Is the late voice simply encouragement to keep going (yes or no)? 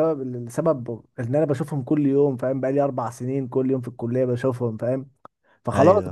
yes